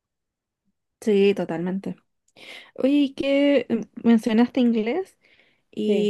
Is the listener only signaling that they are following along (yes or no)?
yes